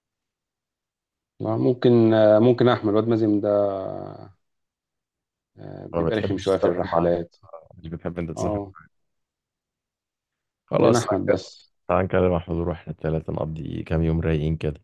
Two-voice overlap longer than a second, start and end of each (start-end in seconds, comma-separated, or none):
5.9-7.1